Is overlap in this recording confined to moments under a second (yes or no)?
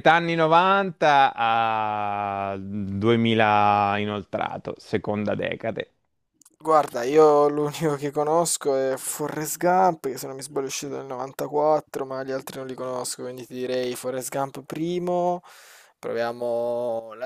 yes